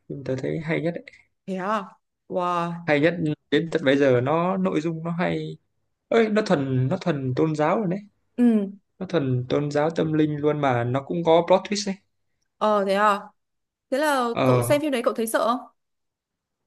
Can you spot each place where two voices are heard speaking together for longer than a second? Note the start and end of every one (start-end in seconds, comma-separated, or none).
none